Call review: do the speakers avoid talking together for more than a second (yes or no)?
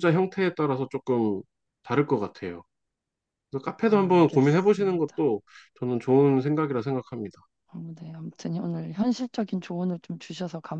no